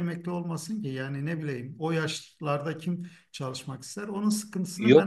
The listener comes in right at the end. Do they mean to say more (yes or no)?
yes